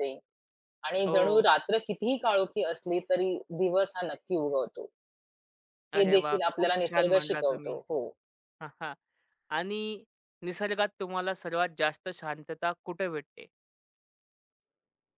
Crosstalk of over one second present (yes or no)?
yes